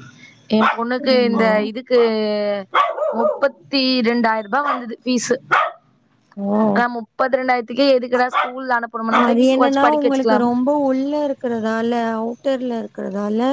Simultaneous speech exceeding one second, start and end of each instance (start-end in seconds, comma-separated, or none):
none